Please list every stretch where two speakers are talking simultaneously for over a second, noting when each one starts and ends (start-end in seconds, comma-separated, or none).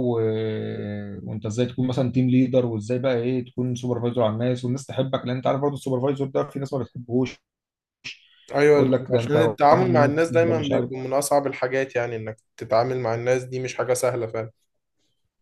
8.7-10.9